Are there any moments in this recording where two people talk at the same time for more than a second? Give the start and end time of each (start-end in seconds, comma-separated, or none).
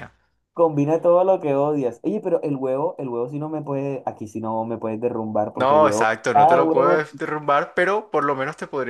5.5-7.0